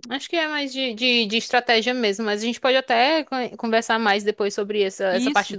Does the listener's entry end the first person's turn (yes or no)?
no